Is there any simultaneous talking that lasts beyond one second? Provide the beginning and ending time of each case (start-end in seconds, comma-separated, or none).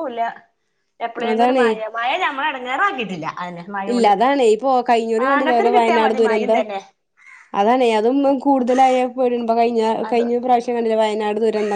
5.2-6.6